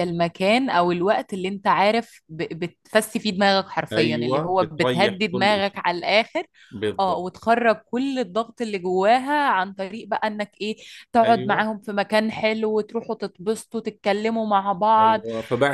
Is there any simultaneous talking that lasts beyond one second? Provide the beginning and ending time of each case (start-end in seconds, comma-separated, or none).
3.9-5.8